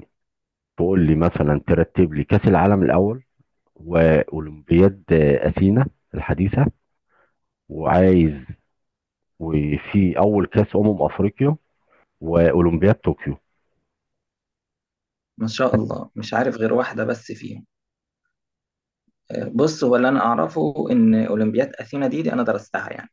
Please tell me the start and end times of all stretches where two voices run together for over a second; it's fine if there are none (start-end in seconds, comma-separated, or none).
none